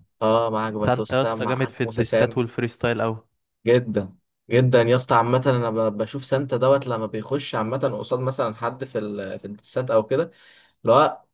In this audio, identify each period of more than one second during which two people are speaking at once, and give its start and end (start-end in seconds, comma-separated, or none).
0.8-2.4